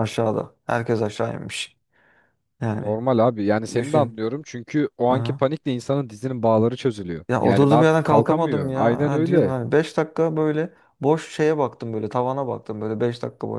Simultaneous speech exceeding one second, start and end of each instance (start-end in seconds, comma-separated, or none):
7.3-9.5